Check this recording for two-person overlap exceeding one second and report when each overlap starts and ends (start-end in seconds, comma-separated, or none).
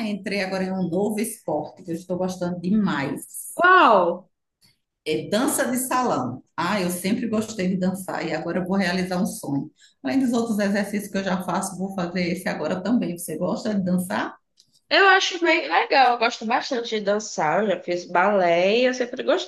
none